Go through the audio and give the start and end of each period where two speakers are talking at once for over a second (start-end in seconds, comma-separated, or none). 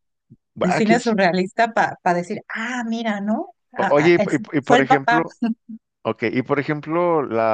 3.7-5.2